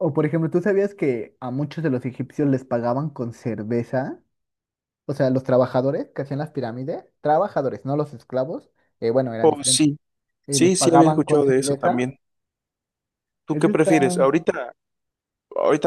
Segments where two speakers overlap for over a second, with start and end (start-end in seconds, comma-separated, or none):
10.5-12.1